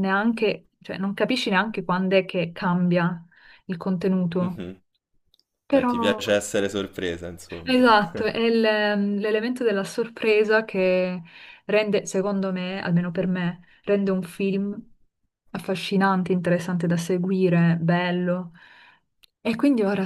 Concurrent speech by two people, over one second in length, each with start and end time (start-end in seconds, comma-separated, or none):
none